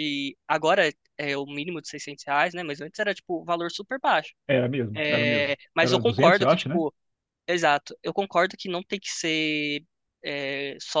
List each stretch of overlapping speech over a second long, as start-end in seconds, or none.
4.9-6.8